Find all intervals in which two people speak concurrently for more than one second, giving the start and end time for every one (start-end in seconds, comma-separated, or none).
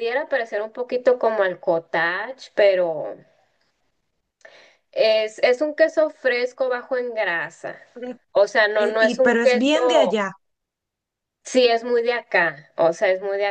8.8-10.2